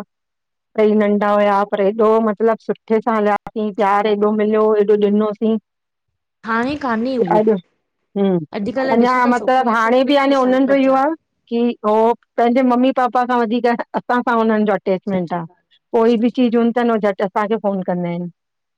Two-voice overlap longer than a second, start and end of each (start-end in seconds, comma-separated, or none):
8.9-11.0